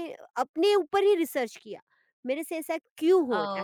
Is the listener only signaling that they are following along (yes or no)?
no